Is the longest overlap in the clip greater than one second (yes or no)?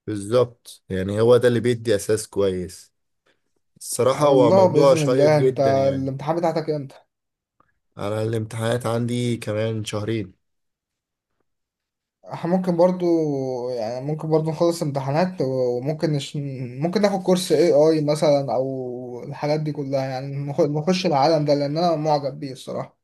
yes